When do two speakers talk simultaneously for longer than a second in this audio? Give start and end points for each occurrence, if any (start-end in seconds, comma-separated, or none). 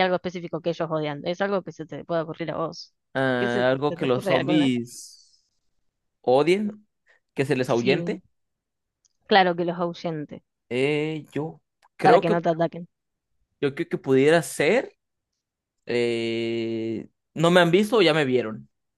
3.4-4.7